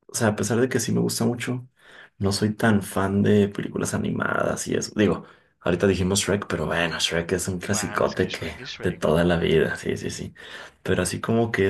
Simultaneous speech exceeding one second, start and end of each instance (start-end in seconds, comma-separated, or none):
7.7-9.4